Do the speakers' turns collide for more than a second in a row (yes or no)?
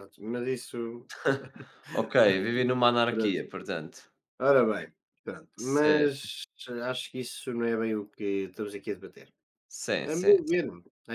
no